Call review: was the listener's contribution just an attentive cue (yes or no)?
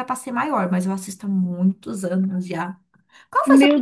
no